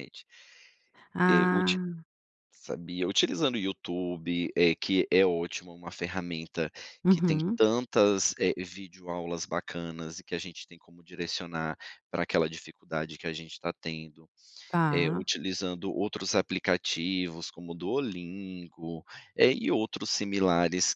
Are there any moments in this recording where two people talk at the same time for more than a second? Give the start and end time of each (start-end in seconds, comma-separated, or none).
none